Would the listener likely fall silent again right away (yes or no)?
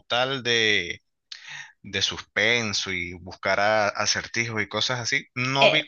yes